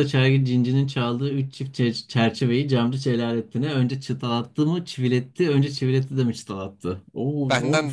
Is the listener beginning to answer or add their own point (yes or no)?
yes